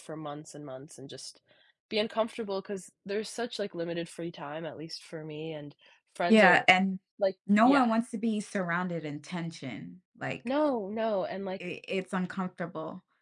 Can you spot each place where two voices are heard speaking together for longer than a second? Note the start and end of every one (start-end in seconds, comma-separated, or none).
none